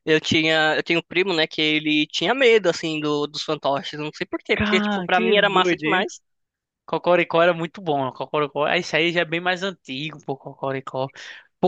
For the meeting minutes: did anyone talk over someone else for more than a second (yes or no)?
yes